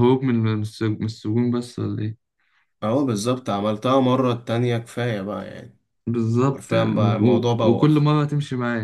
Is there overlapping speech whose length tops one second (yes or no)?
yes